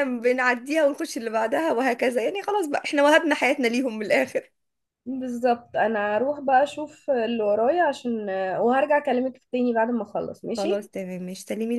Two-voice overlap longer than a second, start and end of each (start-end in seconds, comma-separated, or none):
none